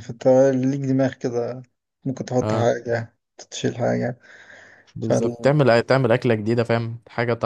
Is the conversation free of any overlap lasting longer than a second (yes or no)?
yes